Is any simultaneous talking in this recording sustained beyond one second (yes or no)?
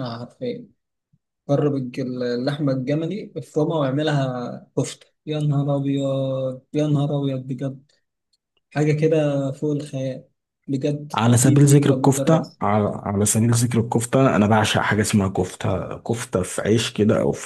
yes